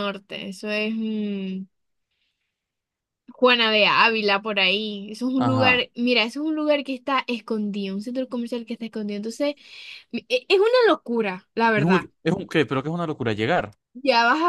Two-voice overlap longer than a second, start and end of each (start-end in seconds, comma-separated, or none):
none